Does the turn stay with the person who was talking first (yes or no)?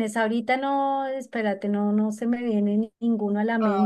no